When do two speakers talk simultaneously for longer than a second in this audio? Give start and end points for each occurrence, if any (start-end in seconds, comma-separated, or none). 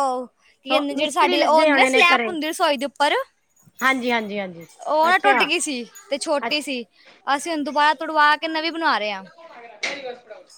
1.0-2.3